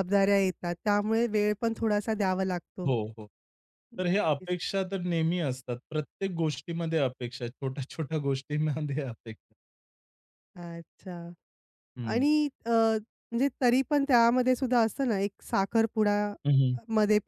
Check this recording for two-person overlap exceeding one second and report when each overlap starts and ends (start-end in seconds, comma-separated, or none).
none